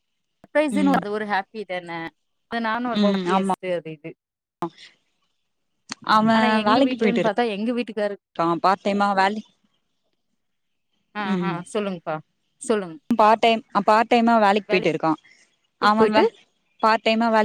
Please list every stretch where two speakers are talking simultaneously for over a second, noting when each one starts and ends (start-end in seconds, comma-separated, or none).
6.6-8.2